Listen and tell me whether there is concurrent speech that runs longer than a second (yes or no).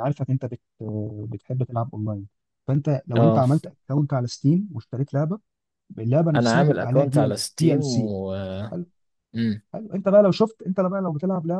yes